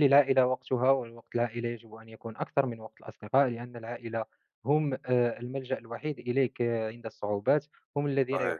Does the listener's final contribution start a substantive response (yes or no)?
no